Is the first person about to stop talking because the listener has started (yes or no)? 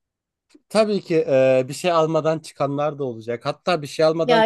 no